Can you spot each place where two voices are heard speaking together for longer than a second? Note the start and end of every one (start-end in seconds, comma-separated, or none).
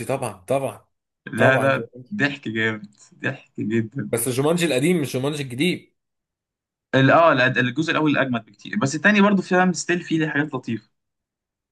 none